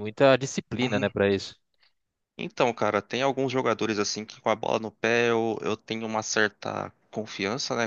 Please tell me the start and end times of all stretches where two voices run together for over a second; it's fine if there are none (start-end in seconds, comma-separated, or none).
none